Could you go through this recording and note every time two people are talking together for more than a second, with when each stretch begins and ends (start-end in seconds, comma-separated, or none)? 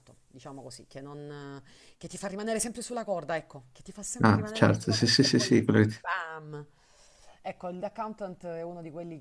4.2-5.6